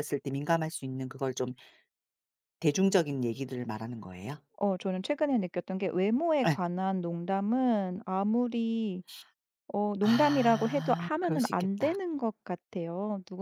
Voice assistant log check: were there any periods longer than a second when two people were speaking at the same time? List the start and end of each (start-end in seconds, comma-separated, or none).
10.0-12.0